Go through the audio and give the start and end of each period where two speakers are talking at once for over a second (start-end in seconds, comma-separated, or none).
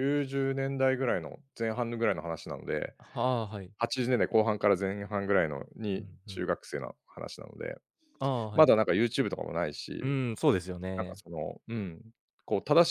none